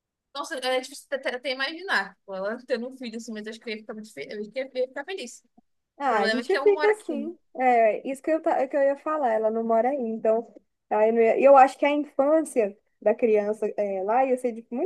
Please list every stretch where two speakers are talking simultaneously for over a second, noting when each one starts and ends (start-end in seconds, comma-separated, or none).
6.0-7.3